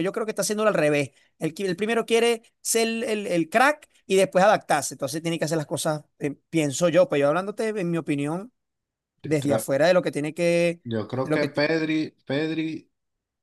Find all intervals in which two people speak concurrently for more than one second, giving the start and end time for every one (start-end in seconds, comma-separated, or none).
none